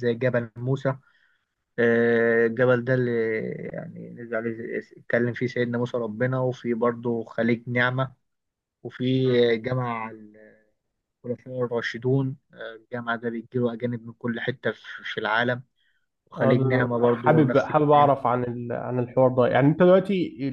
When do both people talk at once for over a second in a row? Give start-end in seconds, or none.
16.4-18.1